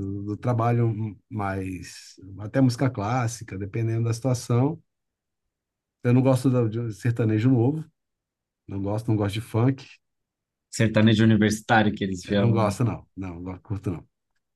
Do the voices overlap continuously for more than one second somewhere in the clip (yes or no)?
no